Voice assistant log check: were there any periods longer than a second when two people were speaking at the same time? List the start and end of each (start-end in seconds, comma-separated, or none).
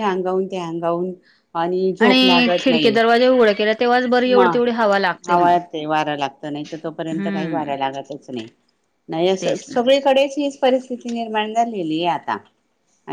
none